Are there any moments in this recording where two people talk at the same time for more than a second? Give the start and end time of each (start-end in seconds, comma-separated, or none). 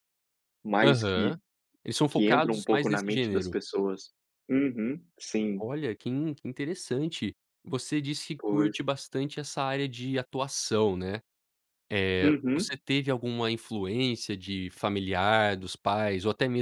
2.1-3.5